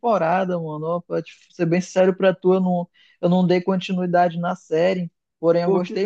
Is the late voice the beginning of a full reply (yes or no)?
no